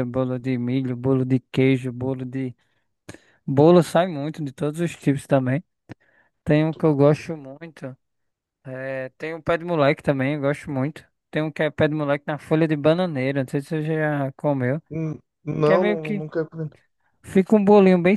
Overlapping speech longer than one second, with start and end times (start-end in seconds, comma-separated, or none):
none